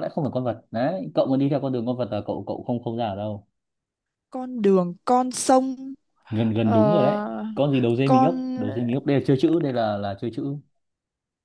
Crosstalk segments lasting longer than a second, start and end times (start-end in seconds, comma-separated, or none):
none